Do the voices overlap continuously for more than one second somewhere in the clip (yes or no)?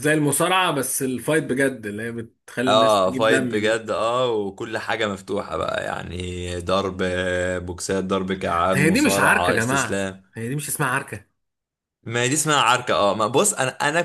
yes